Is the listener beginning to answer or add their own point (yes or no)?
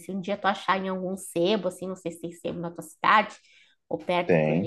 no